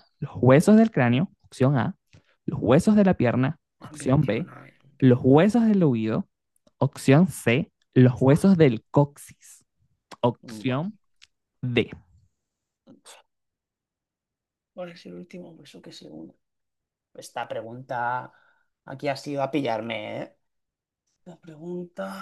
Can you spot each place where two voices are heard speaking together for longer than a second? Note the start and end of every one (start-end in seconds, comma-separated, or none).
none